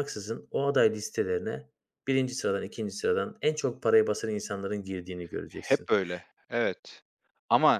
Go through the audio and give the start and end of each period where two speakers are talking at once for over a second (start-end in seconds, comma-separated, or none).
none